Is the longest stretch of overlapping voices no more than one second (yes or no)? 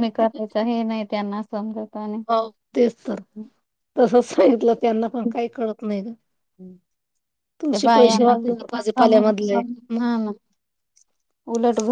no